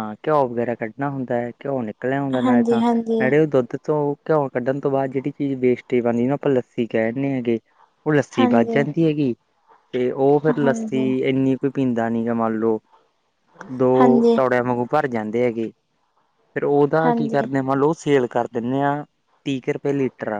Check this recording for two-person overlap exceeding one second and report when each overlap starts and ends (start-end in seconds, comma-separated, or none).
none